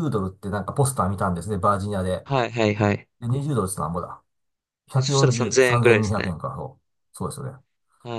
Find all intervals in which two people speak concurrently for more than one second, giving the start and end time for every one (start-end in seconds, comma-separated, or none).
5.0-6.3